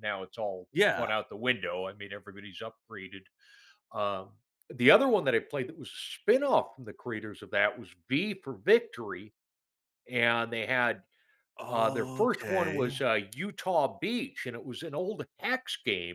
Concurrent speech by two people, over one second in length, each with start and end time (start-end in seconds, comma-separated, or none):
11.7-13.0